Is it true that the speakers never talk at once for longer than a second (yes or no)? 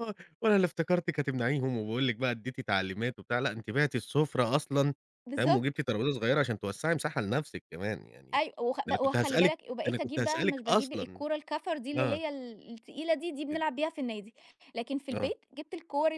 no